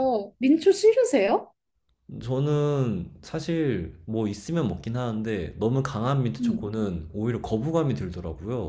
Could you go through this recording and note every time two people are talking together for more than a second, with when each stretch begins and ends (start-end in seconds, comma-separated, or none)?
none